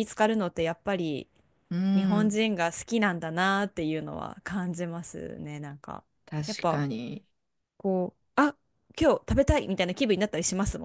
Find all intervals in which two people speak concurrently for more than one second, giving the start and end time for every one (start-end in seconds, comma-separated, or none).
none